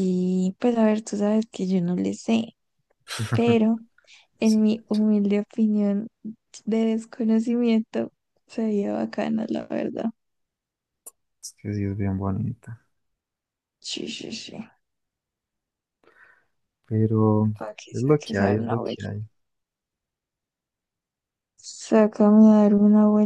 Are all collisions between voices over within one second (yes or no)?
no